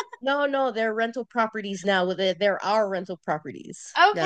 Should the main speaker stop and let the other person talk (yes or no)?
yes